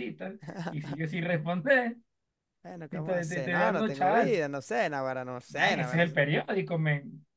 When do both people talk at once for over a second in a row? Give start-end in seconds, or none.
2.9-4.4